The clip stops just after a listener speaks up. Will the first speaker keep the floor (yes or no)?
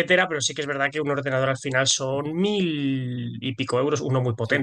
no